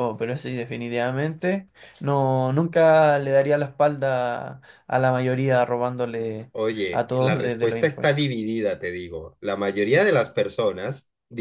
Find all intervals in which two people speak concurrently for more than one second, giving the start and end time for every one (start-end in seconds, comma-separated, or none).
6.9-8.3